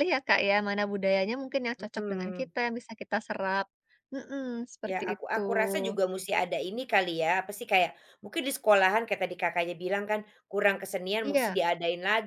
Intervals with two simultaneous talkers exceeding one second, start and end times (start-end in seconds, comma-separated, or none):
none